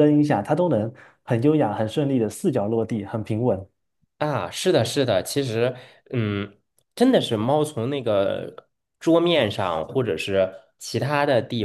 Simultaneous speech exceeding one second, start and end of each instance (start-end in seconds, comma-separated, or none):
none